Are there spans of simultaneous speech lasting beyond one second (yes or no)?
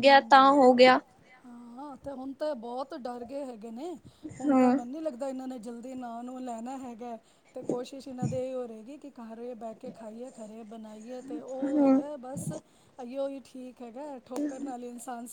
no